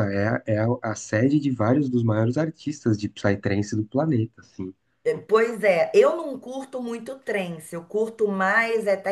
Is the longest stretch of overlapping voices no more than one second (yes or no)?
yes